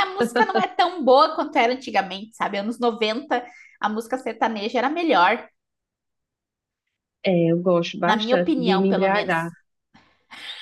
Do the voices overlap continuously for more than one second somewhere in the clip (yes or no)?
yes